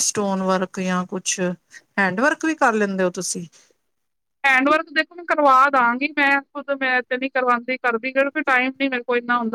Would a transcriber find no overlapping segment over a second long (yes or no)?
yes